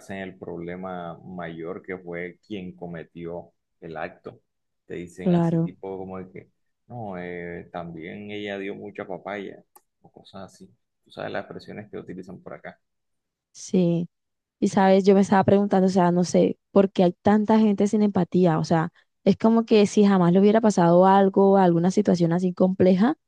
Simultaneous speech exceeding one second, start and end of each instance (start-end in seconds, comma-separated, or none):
none